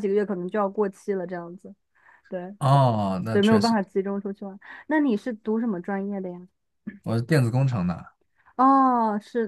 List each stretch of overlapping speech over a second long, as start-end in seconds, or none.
none